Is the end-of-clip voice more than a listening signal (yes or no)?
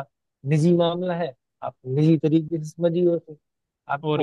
no